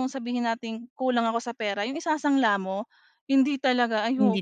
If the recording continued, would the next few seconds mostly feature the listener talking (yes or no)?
no